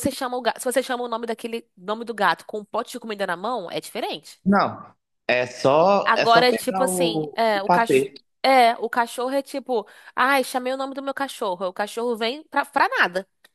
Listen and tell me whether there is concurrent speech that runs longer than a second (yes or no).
yes